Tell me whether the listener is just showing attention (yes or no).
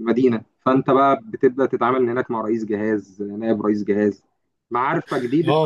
no